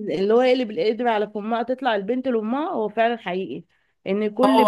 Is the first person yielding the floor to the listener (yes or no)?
no